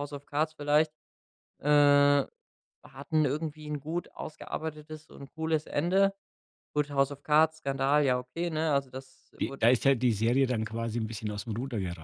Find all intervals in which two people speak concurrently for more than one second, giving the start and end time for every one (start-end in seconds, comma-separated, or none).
none